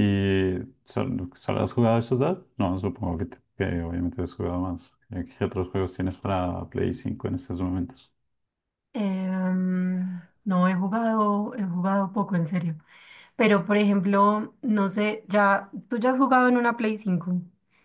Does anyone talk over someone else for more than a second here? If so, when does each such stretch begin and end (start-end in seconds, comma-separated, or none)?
none